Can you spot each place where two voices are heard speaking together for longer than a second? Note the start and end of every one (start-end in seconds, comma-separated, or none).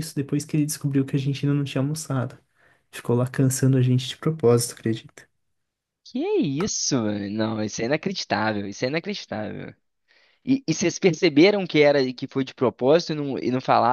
none